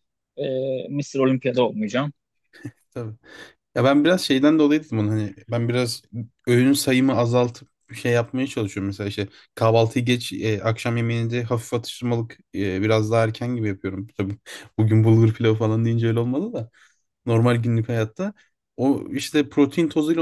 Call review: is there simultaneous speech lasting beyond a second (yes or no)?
no